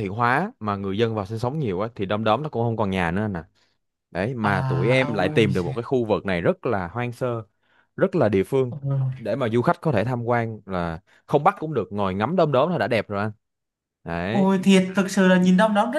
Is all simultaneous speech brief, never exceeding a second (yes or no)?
no